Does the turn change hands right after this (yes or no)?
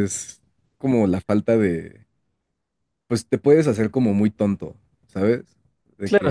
yes